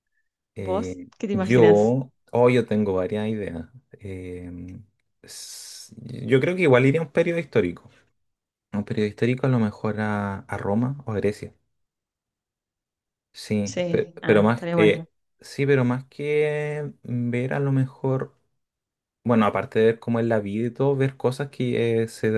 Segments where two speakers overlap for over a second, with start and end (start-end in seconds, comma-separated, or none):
0.6-1.9, 13.6-15.1